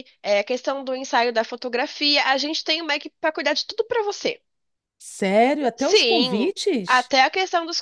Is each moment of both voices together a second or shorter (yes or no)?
no